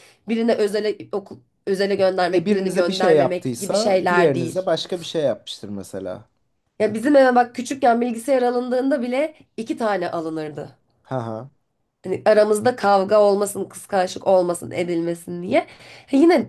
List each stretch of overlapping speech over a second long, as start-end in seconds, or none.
2.3-4.7